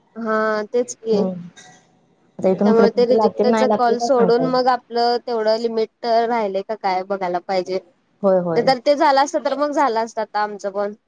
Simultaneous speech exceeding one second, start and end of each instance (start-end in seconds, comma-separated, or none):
2.6-4.6